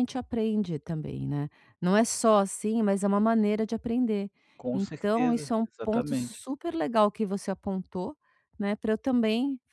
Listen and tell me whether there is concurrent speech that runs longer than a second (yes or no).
yes